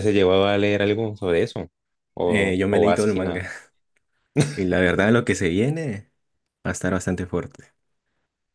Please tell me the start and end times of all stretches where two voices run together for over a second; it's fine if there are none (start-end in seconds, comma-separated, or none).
2.2-3.5